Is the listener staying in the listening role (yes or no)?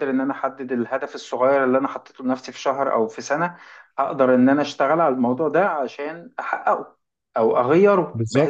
yes